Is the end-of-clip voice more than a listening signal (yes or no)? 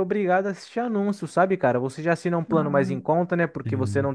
no